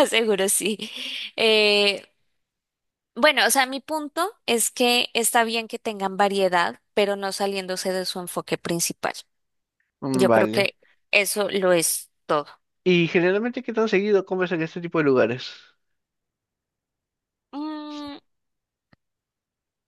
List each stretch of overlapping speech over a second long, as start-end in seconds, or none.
none